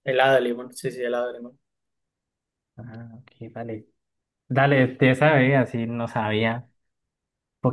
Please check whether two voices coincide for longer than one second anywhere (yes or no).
no